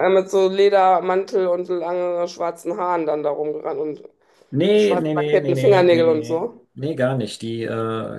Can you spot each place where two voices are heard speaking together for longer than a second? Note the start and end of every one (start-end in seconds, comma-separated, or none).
4.8-6.7